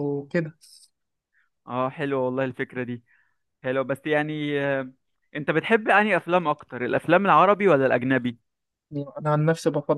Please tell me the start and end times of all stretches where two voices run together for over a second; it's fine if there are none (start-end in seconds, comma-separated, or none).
none